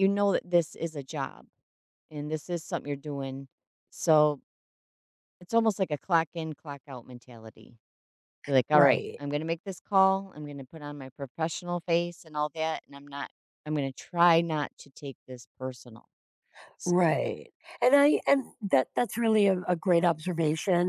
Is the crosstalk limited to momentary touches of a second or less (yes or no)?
yes